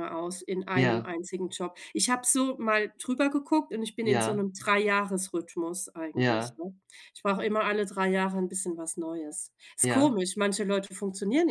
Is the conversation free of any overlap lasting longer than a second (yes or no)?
yes